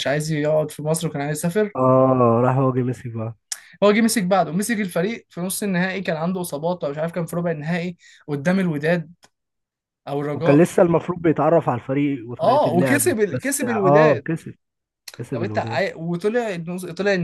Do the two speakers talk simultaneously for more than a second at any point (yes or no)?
yes